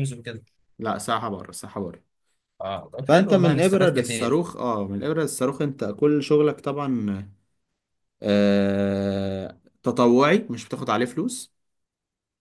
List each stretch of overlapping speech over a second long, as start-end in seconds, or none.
3.1-4.4